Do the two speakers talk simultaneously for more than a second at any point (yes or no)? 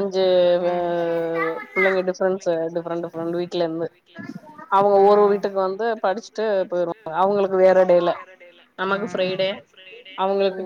yes